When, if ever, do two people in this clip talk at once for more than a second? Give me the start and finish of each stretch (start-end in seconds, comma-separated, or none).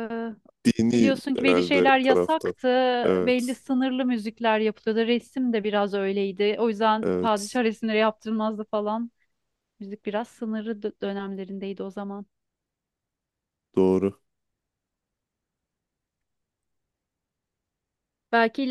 0.9-2.5